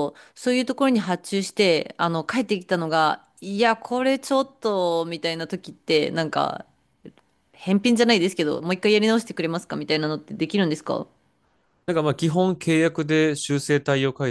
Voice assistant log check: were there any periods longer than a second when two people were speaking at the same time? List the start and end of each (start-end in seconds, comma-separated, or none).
none